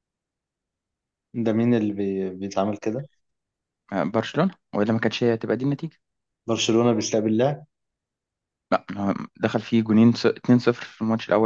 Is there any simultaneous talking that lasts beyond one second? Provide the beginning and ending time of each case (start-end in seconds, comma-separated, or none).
none